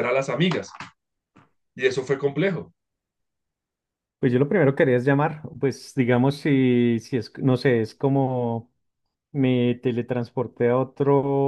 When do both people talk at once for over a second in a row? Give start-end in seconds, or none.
none